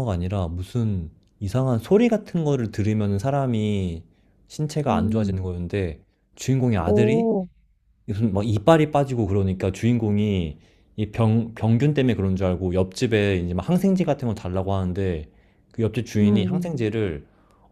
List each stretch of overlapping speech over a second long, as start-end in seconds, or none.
none